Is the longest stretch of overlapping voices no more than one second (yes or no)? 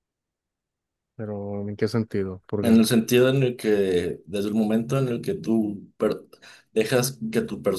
yes